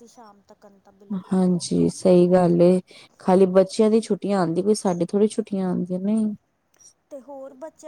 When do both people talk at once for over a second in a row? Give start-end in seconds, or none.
none